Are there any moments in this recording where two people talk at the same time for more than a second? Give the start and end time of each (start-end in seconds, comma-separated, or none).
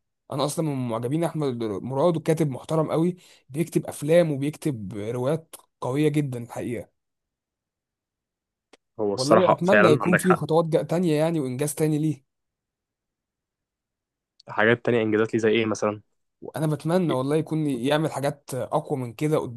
9.1-10.4